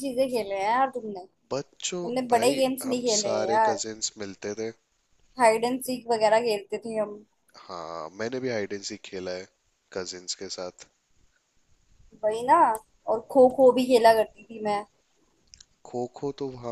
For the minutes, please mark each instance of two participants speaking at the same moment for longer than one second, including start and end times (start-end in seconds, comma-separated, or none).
1.7-3.8